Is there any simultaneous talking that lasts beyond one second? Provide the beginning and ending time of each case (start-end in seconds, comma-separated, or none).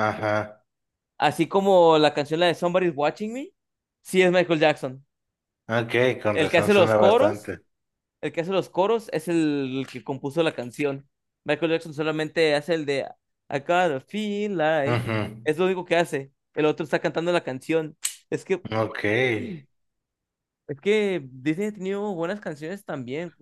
6.3-7.5